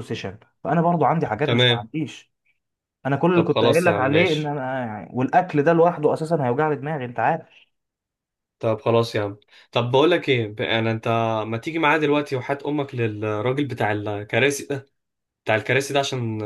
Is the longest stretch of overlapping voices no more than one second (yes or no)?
no